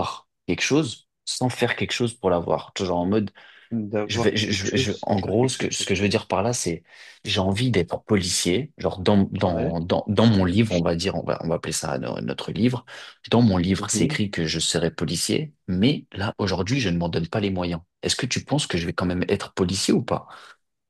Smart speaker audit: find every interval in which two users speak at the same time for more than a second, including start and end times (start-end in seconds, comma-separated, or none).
4.1-5.9